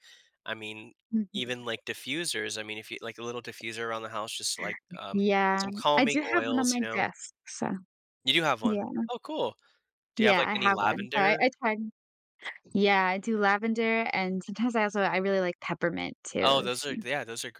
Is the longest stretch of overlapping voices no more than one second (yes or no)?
no